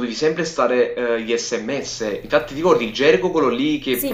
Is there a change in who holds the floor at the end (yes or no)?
yes